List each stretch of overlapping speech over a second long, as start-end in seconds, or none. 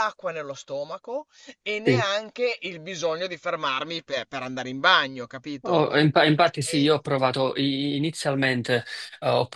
none